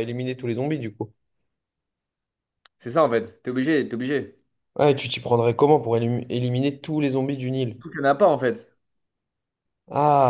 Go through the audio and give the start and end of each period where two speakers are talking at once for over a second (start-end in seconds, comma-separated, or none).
none